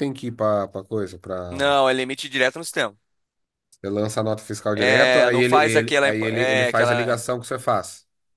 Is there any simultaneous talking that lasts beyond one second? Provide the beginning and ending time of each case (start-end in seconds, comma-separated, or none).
4.8-7.3